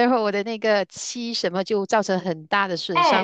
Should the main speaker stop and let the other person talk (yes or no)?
yes